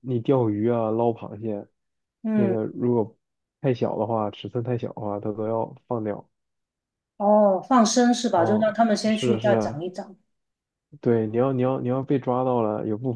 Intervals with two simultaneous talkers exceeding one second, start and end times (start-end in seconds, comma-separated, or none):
8.3-9.8